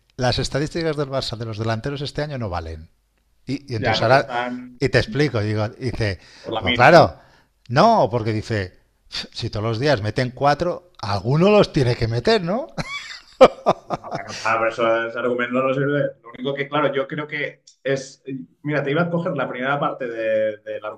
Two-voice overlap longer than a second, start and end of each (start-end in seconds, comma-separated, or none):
none